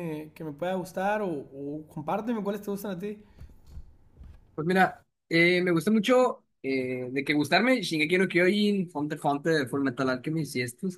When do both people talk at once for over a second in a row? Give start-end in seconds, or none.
none